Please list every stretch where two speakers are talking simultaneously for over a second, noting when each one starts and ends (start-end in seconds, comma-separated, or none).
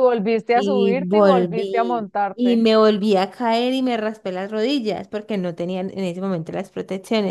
0.5-2.7